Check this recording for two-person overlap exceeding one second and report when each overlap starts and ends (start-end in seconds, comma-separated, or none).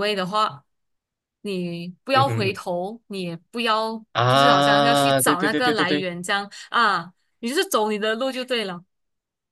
4.1-6.1